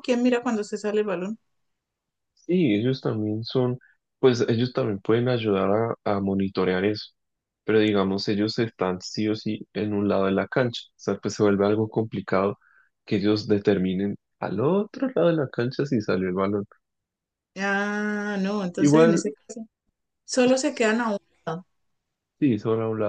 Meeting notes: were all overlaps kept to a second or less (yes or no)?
yes